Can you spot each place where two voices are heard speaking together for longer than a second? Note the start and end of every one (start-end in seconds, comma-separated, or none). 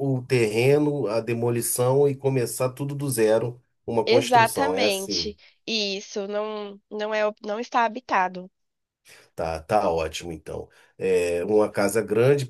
4.1-5.3